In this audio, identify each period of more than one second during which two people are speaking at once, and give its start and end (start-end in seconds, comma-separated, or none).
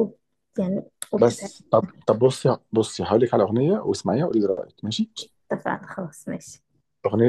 none